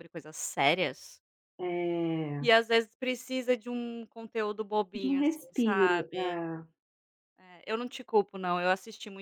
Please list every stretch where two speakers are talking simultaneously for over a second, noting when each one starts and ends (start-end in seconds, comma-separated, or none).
4.9-6.4